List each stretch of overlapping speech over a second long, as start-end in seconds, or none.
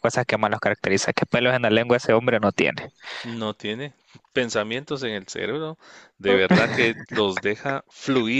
none